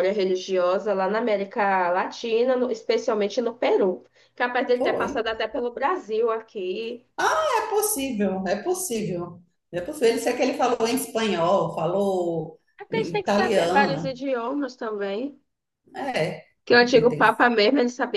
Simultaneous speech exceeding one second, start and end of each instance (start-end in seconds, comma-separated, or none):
12.8-14.2